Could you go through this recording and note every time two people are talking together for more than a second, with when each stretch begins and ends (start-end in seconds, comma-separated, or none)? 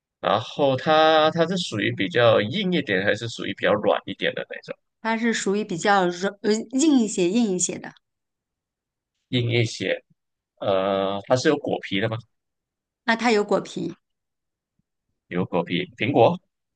none